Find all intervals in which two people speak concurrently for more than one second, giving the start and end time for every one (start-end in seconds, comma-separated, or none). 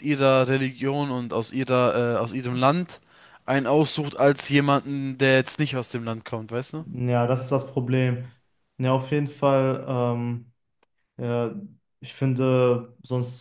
none